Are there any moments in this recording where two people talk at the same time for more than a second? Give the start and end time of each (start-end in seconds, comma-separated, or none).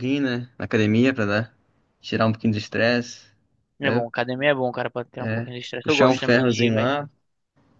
5.2-6.9